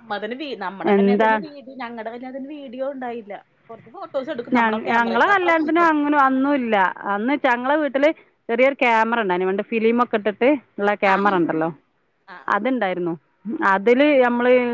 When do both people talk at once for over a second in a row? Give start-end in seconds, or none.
none